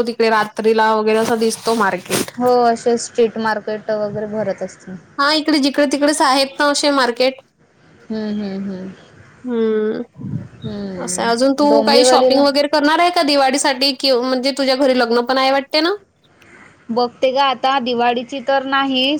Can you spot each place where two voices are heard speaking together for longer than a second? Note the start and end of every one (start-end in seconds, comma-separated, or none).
11.0-12.4